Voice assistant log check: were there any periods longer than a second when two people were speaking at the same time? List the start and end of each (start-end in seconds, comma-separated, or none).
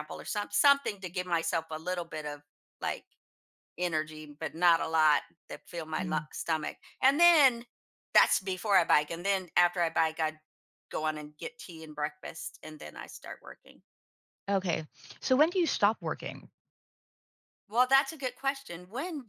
none